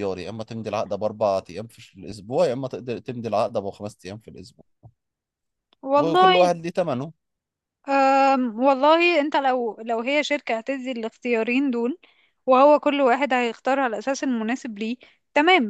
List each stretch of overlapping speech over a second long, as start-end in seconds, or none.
none